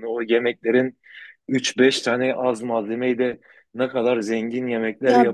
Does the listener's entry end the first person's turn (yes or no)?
no